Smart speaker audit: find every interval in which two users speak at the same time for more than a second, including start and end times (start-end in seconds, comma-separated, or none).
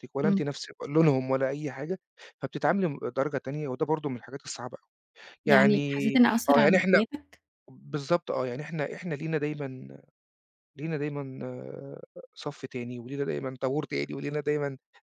5.5-7.0